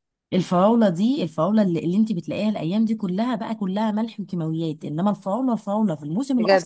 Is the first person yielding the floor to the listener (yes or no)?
no